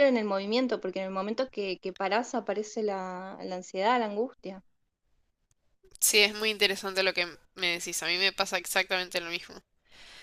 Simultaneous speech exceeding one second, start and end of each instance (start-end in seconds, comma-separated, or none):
none